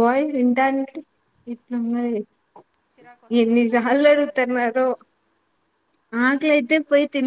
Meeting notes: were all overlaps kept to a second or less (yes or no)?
no